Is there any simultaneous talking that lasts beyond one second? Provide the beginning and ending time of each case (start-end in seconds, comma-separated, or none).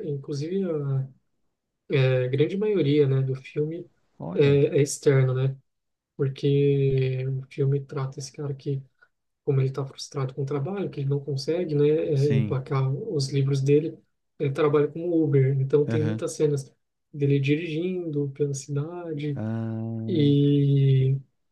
none